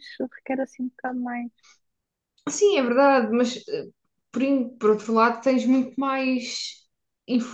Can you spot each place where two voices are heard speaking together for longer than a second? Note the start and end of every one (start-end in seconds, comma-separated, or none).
none